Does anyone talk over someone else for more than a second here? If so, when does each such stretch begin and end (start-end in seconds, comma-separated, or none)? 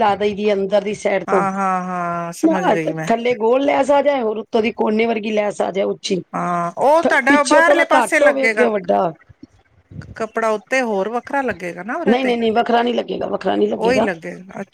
7.3-8.7